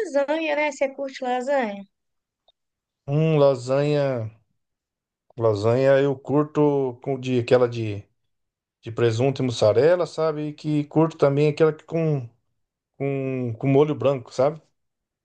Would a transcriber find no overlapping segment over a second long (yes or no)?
yes